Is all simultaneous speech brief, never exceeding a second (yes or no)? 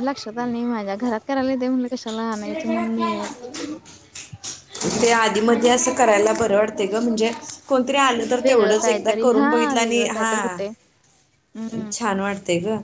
no